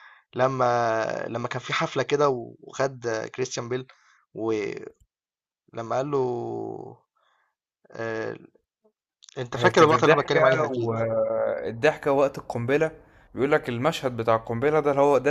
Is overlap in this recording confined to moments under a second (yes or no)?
no